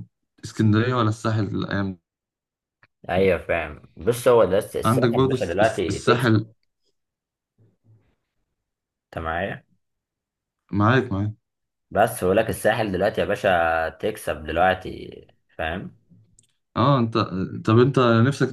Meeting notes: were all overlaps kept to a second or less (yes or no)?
no